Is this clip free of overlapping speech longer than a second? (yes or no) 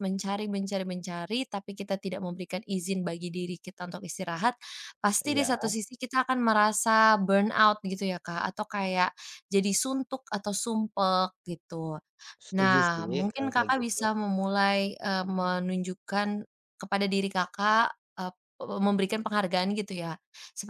no